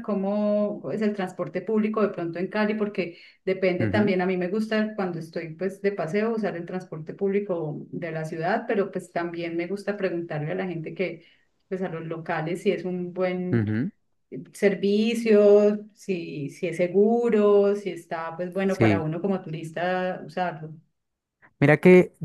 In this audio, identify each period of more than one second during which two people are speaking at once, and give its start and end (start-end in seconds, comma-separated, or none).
none